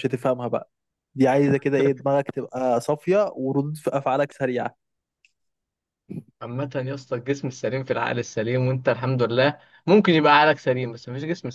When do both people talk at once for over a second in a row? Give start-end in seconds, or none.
none